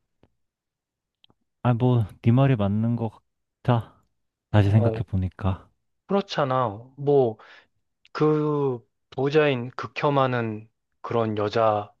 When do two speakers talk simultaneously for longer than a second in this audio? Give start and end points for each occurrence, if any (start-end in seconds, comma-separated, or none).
none